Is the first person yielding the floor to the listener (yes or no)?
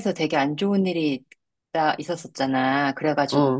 no